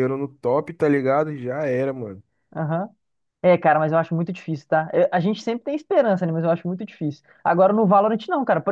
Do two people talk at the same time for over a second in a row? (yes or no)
no